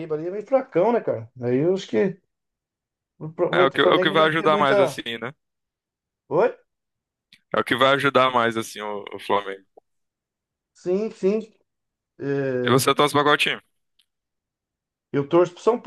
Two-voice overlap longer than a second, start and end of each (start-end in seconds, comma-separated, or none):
3.5-5.0